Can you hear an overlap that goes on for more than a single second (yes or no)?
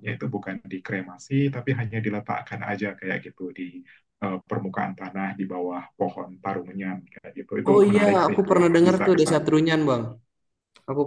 yes